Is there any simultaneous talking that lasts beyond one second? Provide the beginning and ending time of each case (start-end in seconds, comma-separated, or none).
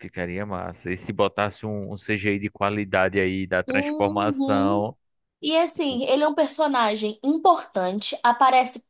3.7-4.9